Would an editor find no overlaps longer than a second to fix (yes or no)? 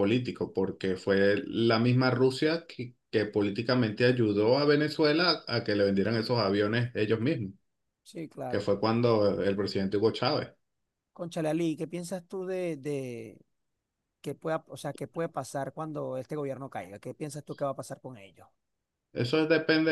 yes